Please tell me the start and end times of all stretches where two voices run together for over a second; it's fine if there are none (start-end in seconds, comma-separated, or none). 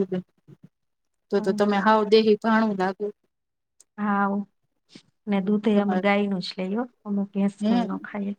none